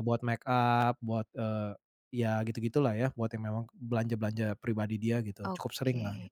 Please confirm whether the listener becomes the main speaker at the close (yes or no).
yes